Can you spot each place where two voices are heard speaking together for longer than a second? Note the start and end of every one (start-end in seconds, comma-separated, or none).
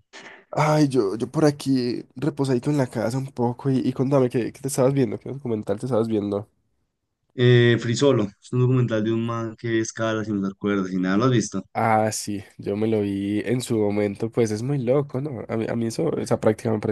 none